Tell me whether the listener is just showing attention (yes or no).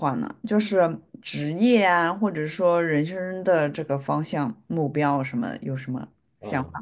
no